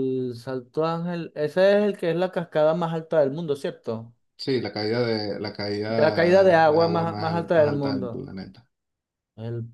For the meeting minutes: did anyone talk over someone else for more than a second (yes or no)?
yes